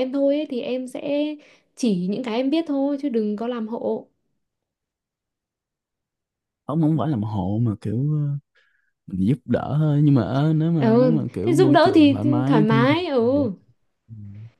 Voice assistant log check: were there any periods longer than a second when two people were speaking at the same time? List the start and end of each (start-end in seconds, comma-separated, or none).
10.8-13.5